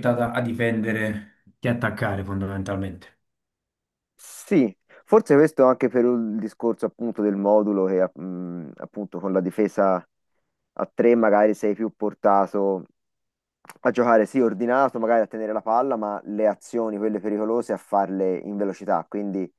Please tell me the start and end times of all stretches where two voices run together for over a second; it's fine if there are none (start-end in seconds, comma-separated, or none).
none